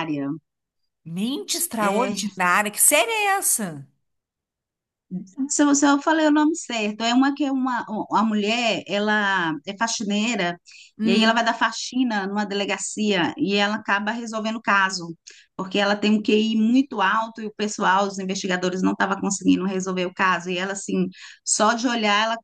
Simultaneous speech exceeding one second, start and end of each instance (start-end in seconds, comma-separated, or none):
none